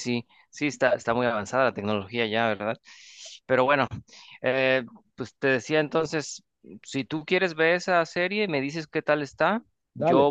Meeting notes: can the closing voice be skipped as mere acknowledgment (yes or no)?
yes